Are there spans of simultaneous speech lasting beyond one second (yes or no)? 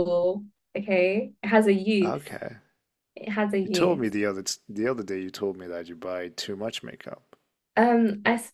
no